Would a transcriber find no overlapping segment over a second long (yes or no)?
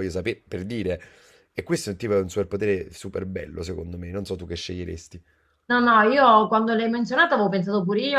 yes